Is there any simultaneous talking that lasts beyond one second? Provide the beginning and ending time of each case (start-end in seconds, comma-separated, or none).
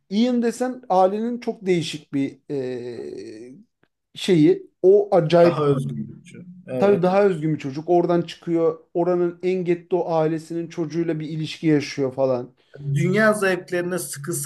none